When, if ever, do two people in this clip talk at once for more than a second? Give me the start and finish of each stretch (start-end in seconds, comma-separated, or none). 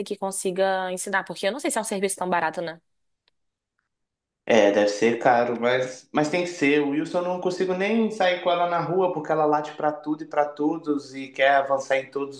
none